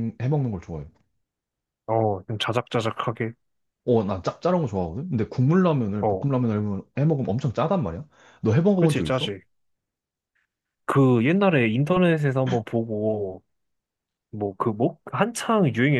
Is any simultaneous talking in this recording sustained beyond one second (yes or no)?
no